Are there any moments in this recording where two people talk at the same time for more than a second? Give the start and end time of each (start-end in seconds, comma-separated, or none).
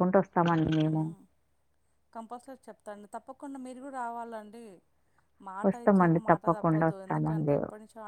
5.7-7.6